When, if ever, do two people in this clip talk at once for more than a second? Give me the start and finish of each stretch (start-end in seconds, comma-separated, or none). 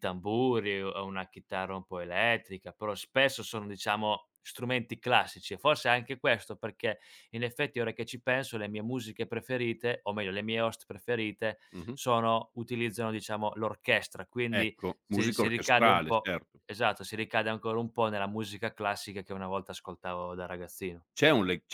14.6-16.6